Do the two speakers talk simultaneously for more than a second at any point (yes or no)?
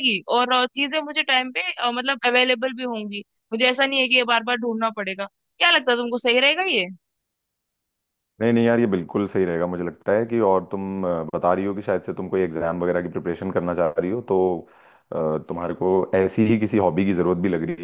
no